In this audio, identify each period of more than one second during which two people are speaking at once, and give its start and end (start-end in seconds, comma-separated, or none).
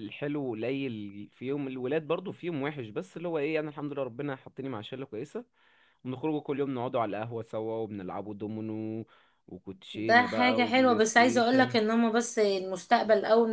9.9-11.8